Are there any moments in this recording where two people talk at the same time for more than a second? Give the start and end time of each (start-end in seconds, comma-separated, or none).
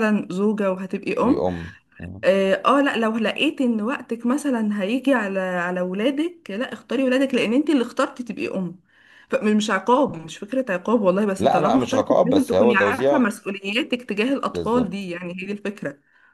11.4-13.3